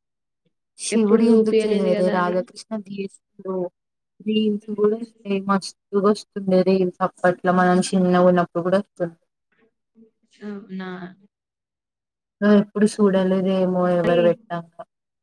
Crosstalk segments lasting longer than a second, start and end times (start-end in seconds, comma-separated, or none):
1.0-2.3